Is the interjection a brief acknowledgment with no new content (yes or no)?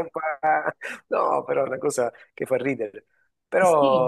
yes